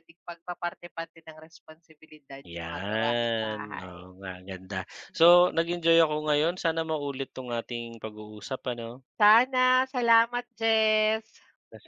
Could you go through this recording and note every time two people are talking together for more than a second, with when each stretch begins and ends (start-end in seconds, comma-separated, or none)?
2.5-4.1